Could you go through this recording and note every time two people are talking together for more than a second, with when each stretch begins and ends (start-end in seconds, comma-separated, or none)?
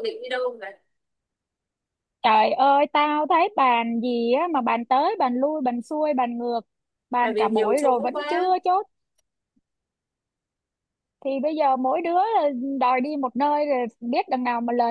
7.2-8.4